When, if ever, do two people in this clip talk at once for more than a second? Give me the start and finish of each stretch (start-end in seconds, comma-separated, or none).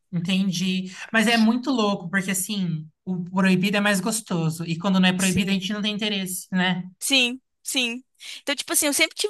none